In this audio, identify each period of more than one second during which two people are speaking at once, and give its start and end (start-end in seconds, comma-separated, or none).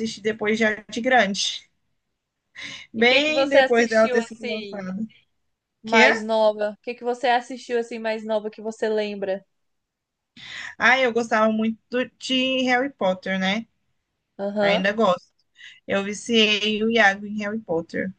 3.0-4.9